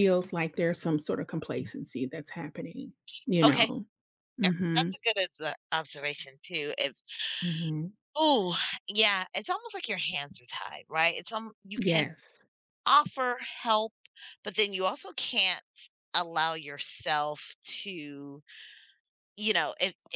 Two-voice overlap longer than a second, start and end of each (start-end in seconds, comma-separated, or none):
none